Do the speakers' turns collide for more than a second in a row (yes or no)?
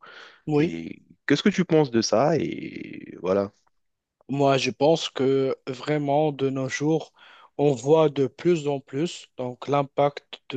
no